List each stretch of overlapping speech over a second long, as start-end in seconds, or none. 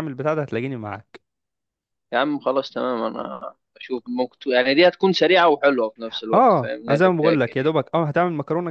6.3-7.7